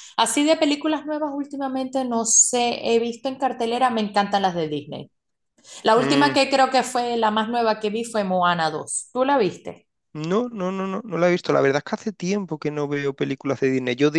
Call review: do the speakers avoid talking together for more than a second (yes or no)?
yes